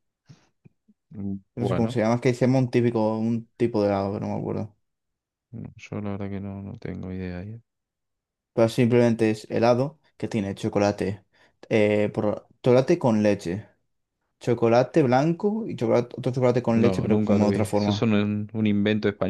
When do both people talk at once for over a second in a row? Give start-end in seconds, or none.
16.7-18.1